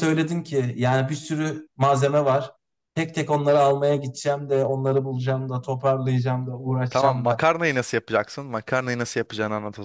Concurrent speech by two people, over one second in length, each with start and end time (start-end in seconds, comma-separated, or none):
none